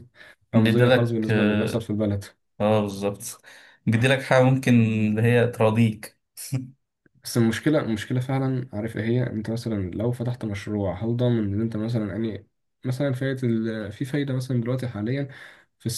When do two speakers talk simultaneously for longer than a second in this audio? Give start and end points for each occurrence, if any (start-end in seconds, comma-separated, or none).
0.5-1.9